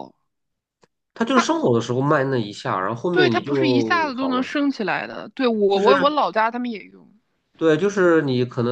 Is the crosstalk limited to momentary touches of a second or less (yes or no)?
no